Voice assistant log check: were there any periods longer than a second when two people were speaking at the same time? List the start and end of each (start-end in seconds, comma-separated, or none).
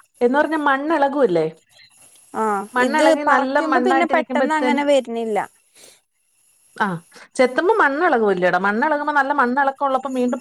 2.8-4.8